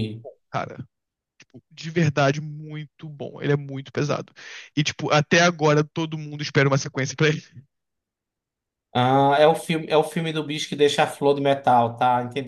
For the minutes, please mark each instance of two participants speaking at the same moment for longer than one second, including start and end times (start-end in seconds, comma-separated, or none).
none